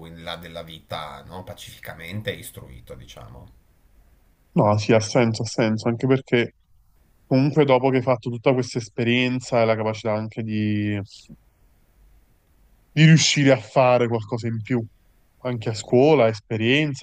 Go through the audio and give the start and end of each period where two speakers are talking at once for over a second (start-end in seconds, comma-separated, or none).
none